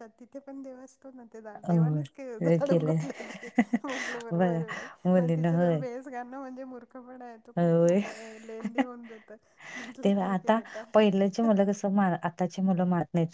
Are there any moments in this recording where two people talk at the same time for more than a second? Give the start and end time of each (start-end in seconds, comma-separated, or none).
none